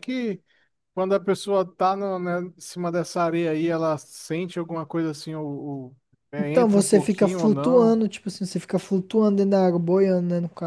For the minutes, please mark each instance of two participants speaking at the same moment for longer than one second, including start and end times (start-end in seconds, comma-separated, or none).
6.4-8.0